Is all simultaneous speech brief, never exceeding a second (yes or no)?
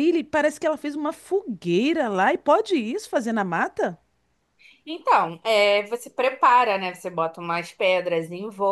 yes